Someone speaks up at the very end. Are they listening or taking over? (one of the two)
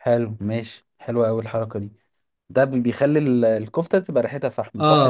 taking over